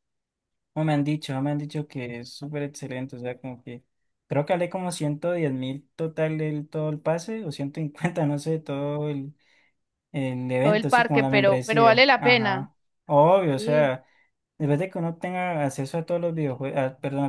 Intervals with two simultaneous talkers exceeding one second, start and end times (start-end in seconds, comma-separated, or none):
10.6-12.7